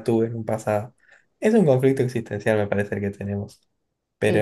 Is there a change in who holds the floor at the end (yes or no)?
no